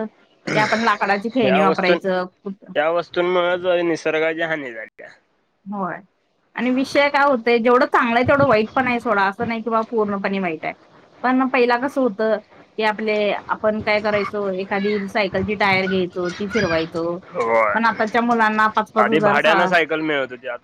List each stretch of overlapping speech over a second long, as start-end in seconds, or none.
none